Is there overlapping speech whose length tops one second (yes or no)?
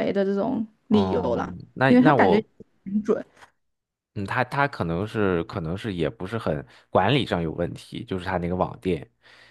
yes